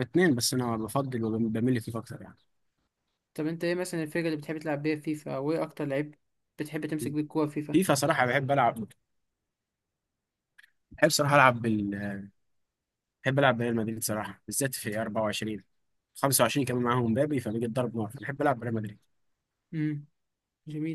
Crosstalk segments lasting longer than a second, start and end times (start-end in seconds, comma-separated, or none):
none